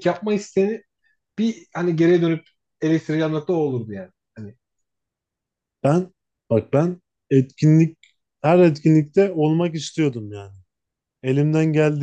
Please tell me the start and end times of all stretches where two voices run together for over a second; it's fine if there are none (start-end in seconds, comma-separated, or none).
none